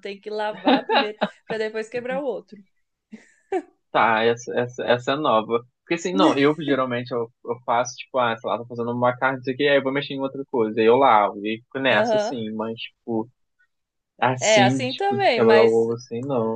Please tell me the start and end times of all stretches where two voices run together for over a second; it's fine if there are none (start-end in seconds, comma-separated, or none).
14.4-15.8